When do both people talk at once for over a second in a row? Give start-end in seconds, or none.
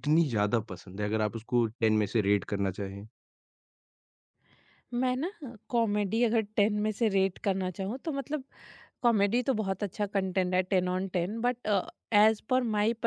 none